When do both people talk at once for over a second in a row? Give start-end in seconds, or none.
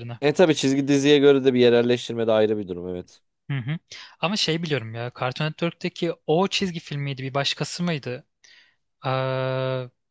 none